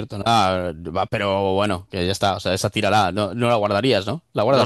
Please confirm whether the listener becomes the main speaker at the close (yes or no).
yes